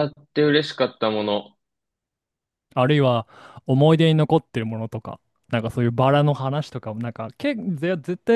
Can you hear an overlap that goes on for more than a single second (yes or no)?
no